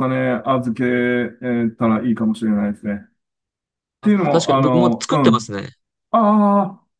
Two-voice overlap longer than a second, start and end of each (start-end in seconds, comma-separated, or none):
4.0-5.5